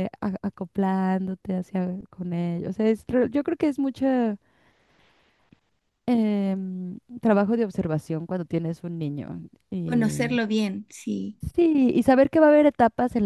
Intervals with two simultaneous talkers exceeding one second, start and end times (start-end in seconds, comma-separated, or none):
none